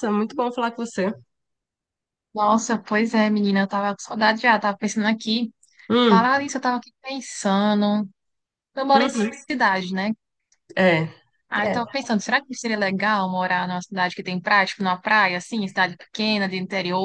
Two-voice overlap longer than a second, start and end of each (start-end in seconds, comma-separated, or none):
none